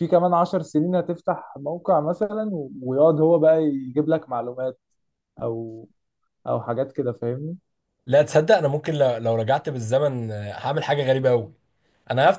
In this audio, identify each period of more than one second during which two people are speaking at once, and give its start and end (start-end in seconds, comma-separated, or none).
none